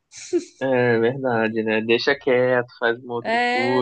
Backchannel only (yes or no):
no